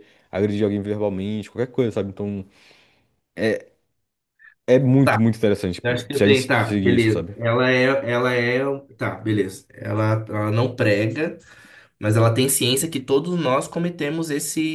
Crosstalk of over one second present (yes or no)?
yes